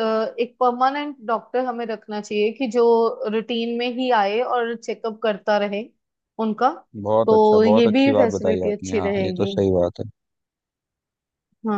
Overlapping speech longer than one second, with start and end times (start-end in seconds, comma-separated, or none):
7.3-9.5